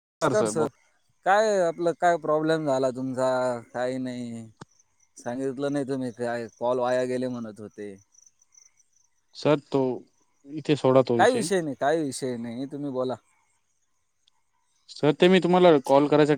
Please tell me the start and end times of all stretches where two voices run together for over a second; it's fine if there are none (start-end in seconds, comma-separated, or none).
none